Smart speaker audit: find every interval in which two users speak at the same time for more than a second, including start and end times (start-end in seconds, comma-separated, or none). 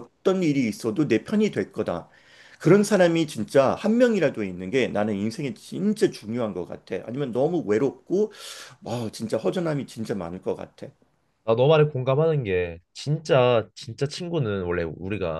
none